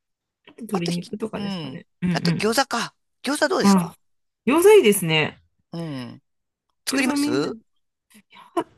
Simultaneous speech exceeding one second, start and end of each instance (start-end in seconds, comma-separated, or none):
0.7-2.6